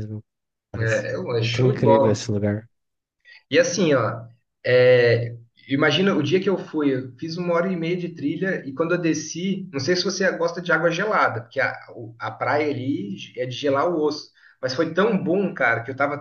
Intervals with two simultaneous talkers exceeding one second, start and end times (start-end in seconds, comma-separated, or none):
0.8-2.2